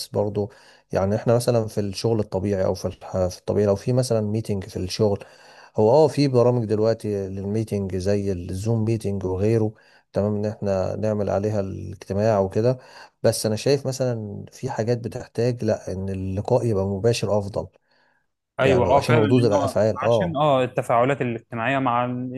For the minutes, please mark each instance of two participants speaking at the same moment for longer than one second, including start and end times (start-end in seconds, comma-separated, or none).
18.6-20.4